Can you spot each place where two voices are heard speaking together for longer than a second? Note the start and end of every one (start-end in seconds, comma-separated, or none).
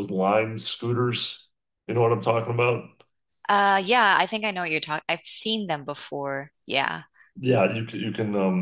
none